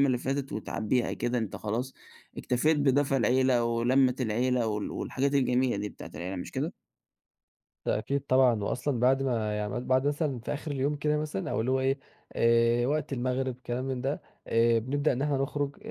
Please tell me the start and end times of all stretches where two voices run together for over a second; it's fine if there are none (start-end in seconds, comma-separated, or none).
none